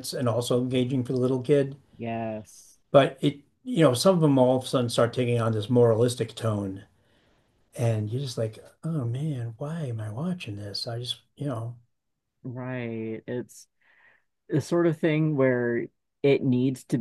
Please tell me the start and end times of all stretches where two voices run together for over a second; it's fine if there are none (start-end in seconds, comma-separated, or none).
none